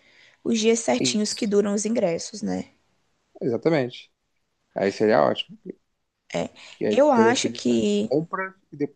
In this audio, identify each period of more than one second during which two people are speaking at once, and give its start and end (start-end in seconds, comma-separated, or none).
6.9-8.1